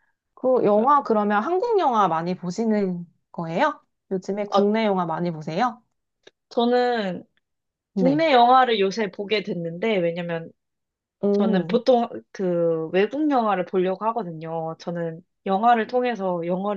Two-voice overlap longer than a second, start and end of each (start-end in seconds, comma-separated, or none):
none